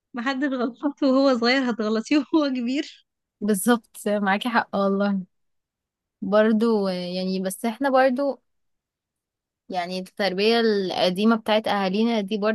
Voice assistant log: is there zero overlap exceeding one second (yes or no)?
yes